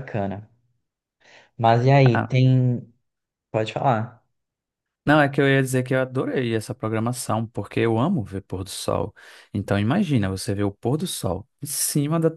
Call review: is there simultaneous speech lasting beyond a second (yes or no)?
no